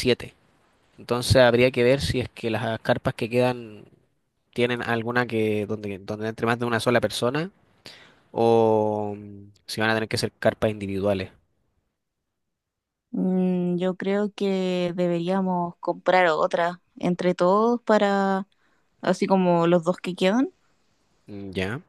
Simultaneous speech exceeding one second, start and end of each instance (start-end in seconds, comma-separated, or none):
none